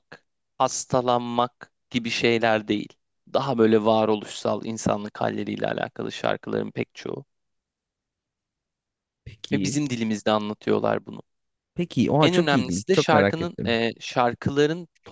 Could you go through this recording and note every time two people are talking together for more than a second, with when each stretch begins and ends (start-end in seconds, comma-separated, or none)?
12.2-13.8